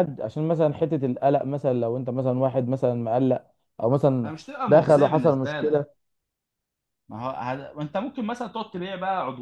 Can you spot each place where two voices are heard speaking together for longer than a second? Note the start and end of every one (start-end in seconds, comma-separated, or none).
4.2-5.8